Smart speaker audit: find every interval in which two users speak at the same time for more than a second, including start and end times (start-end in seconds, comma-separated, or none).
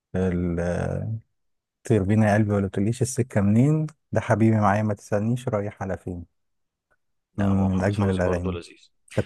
7.4-8.6